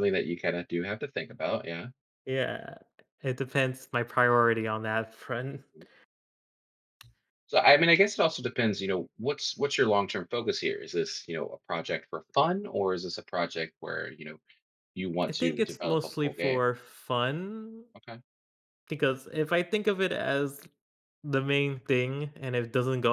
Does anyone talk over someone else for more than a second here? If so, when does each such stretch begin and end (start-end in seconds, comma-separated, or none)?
15.3-16.6